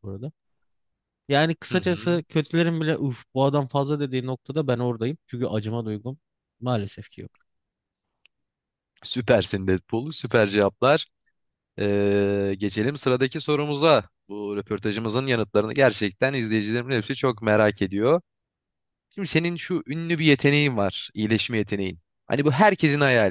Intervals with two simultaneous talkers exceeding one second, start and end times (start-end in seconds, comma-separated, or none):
none